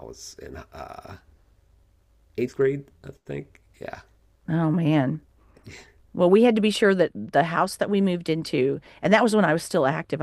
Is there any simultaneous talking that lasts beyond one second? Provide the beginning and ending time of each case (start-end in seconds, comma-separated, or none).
none